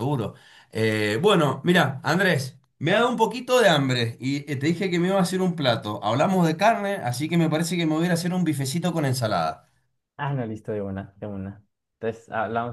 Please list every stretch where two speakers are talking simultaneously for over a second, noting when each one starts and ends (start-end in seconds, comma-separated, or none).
none